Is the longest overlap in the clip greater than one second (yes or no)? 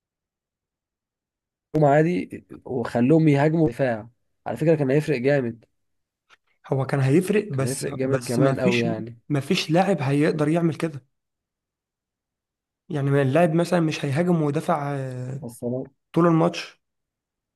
yes